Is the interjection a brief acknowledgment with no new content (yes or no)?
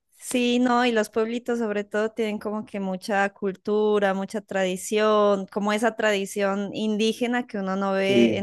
yes